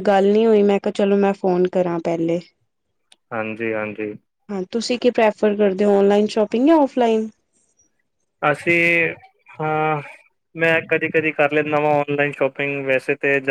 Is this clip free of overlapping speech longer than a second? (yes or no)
yes